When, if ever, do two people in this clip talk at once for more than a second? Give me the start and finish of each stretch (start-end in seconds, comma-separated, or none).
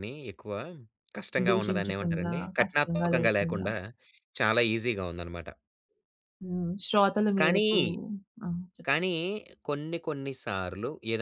1.5-3.7